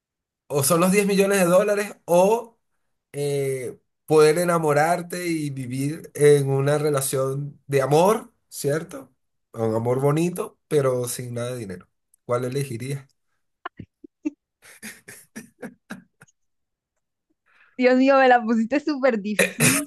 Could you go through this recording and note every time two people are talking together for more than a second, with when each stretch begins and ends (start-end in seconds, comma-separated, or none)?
none